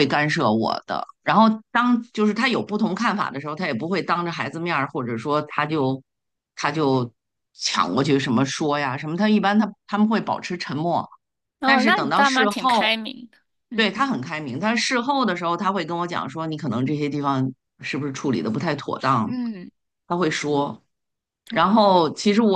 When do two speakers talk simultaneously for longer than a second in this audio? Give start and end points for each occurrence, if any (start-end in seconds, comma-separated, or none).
11.6-12.9